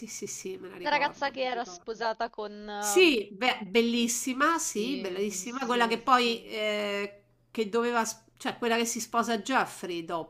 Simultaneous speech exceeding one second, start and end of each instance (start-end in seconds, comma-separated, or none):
0.8-2.0, 4.5-6.0